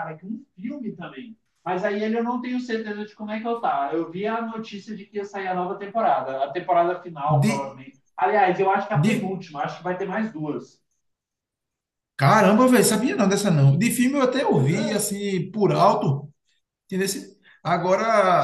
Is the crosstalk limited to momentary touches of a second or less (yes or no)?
yes